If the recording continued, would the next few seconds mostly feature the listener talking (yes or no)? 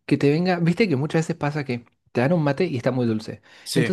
no